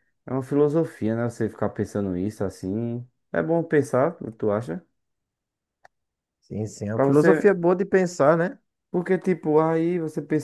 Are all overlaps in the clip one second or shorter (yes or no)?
yes